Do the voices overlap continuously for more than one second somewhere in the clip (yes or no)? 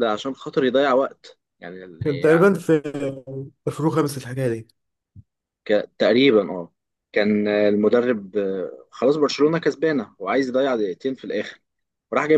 no